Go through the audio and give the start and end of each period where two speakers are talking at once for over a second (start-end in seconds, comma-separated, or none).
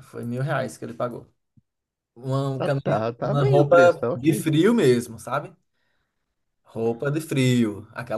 2.6-4.5